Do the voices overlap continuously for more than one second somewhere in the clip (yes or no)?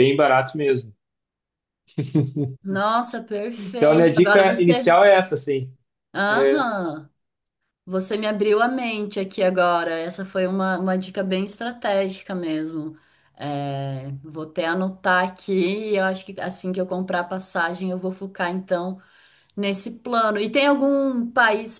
yes